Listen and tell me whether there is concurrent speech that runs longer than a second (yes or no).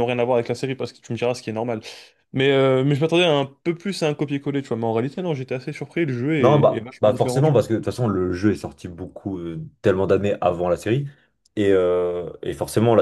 yes